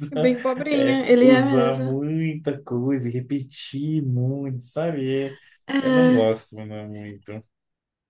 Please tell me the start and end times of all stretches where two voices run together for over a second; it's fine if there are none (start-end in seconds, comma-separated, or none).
0.7-2.0